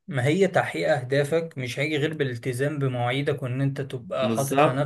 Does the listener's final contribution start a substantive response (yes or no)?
no